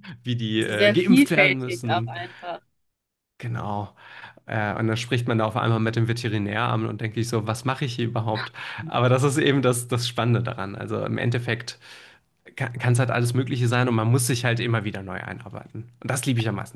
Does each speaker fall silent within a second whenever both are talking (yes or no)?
no